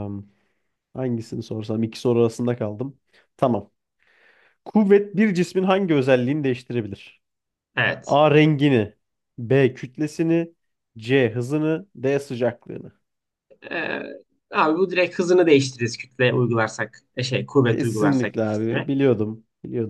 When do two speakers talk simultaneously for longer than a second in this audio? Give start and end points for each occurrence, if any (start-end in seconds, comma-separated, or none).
17.6-18.9